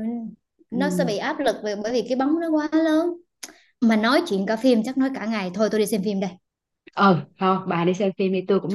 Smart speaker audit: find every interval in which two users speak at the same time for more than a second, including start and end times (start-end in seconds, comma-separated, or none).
none